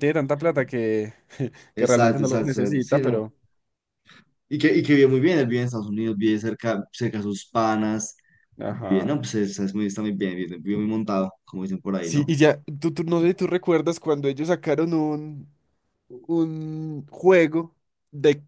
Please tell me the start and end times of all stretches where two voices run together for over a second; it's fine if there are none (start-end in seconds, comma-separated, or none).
1.8-3.3